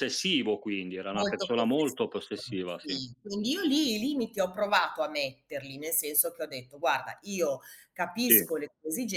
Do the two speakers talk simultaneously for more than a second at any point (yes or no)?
yes